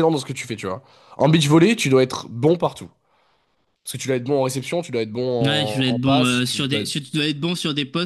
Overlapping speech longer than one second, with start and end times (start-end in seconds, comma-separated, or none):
5.4-6.8